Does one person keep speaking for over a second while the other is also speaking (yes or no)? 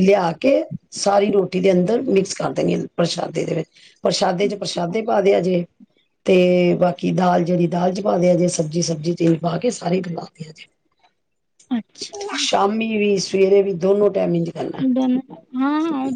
no